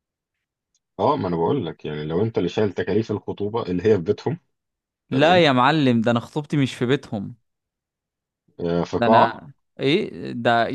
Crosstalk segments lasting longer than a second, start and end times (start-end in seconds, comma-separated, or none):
none